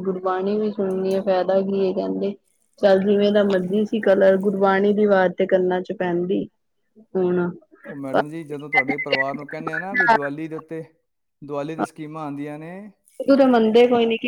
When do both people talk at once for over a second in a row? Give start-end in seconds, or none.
none